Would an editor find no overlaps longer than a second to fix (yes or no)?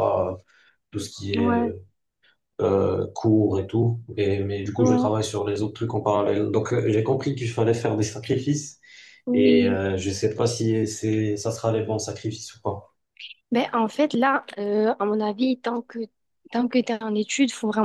yes